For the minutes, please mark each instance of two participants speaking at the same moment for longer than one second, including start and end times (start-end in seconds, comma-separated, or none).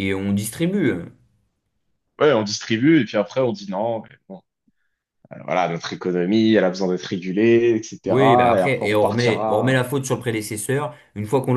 8.0-9.9